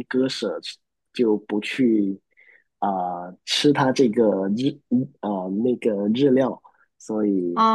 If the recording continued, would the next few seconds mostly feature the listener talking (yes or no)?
yes